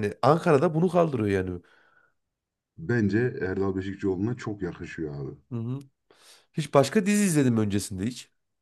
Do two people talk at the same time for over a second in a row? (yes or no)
no